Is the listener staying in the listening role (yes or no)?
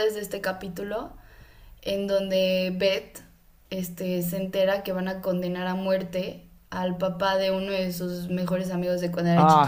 no